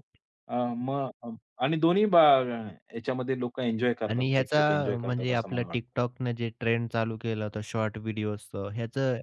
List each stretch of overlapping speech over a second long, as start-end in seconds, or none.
4.1-5.8